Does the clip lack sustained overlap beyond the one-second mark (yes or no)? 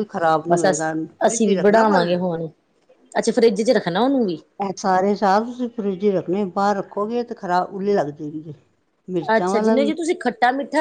no